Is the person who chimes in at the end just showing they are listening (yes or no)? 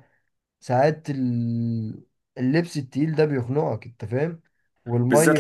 no